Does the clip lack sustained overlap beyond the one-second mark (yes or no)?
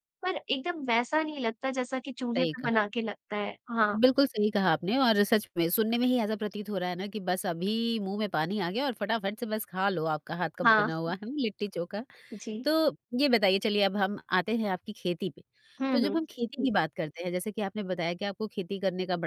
yes